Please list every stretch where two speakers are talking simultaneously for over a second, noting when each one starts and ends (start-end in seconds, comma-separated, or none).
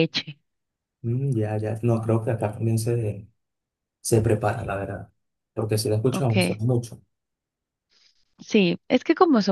none